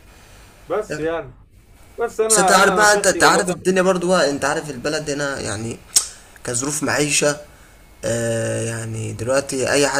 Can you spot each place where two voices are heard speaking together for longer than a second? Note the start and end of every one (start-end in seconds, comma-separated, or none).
2.3-3.7